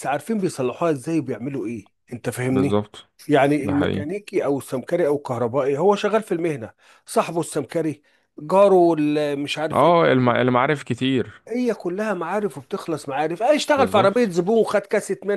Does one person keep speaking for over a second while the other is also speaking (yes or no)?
no